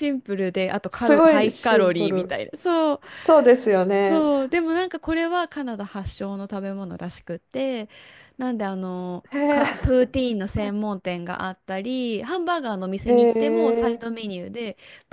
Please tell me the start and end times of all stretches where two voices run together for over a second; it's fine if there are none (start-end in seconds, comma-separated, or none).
0.9-2.4